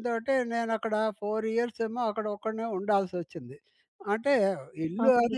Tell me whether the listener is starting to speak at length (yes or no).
no